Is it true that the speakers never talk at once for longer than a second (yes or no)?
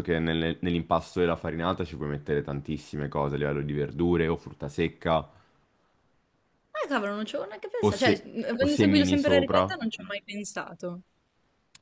no